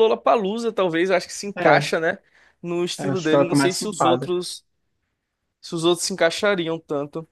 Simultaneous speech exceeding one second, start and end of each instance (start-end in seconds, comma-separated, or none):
3.0-4.3